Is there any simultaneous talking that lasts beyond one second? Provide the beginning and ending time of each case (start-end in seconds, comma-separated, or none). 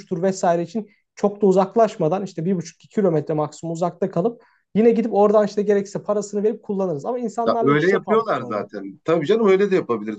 7.5-8.7